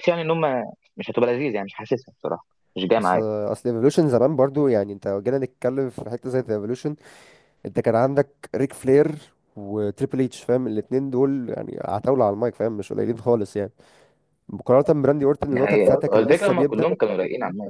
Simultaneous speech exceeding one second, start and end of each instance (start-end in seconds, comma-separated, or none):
15.5-16.9